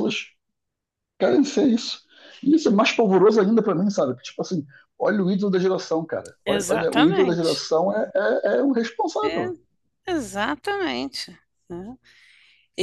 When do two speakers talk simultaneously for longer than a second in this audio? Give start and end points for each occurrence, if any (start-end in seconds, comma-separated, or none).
6.5-7.7